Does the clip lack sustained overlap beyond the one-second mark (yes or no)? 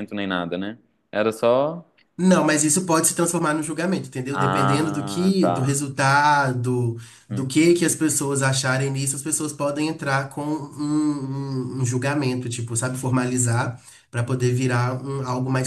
no